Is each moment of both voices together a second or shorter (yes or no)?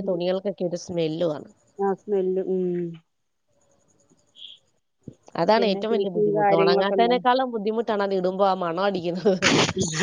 no